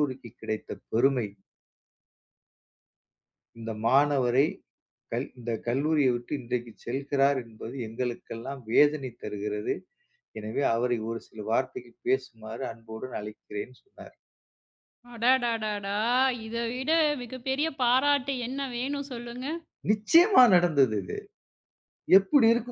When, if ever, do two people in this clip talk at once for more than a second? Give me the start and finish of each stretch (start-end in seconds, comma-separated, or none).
none